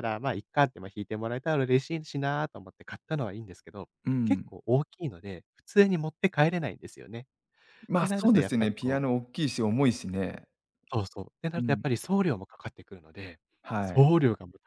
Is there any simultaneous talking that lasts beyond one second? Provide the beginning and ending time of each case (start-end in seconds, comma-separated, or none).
8.0-9.2